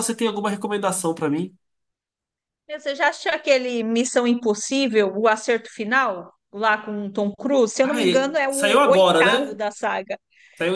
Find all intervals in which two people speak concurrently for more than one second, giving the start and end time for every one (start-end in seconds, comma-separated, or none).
7.8-9.6